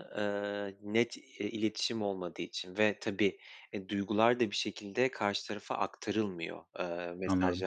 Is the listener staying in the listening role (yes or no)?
yes